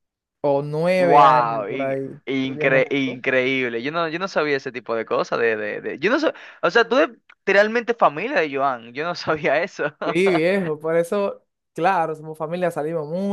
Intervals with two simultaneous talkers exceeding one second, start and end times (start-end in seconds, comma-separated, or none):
1.0-3.2